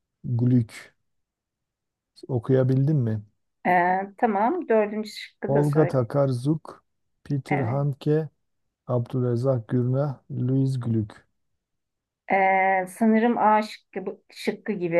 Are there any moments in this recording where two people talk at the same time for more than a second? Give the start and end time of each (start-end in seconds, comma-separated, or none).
none